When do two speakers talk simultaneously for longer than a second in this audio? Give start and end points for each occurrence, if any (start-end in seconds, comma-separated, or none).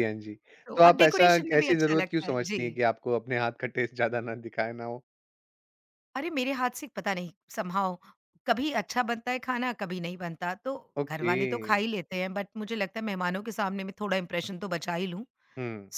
0.8-2.6